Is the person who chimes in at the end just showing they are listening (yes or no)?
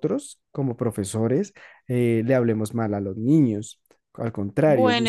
no